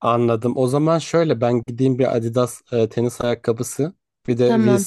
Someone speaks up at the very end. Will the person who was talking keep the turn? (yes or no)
yes